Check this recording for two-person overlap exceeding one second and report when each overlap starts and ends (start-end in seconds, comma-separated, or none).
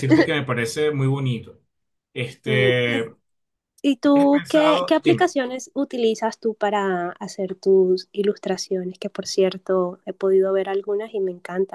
4.0-5.3